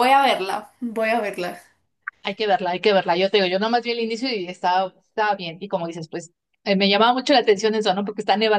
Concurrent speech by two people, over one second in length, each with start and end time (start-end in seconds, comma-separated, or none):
none